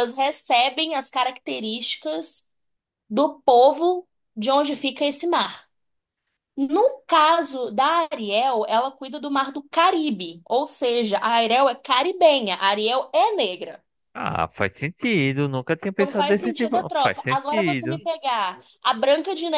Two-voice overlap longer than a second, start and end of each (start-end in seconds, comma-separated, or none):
15.9-18.0